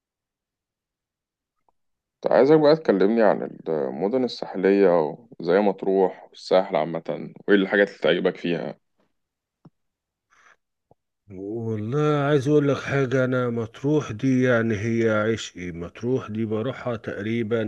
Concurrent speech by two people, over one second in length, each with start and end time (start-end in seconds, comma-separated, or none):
none